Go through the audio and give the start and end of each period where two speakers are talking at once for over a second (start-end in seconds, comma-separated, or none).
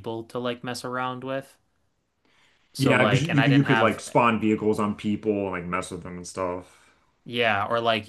2.8-4.0